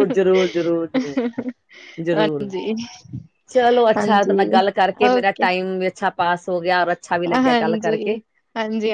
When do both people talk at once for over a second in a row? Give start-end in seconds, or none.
none